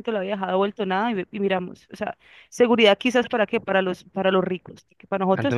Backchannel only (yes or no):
no